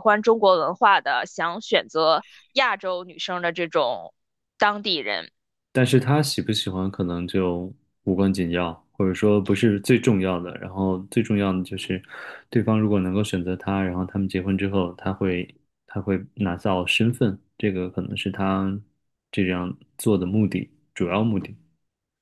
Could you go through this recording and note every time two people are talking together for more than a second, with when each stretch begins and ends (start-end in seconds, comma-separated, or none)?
none